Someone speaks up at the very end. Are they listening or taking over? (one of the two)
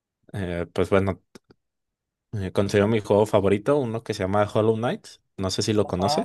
taking over